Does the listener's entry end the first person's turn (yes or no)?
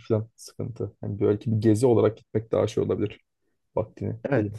yes